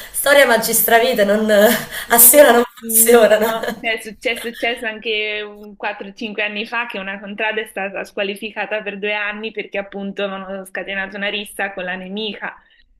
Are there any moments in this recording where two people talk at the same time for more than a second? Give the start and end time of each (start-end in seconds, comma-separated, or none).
2.1-3.5